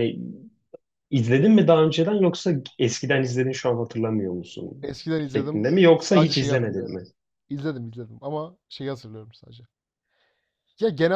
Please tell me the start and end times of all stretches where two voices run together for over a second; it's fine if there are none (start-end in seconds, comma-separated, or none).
4.8-7.0